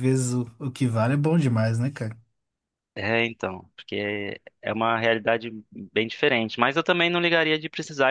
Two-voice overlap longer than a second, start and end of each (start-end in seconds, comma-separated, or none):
none